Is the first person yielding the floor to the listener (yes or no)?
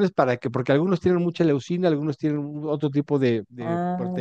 no